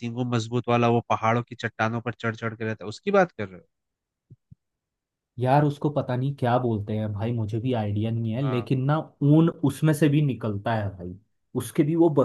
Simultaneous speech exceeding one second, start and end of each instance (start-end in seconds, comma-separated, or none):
none